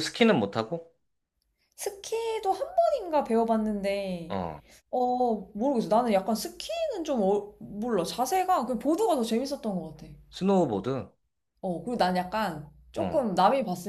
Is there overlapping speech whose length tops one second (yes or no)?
no